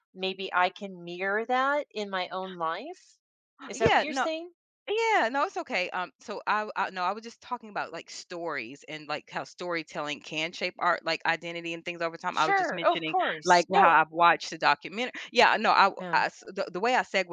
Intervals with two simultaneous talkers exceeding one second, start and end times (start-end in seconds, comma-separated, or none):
12.3-14.0